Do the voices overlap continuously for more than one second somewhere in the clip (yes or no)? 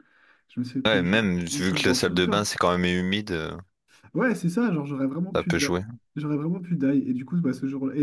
yes